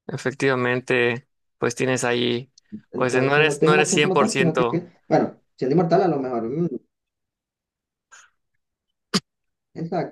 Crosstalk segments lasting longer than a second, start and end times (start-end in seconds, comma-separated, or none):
3.0-4.8